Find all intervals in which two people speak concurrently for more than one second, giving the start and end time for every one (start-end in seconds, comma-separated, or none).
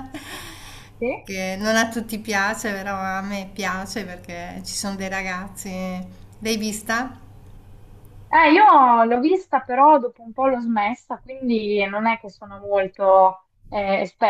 none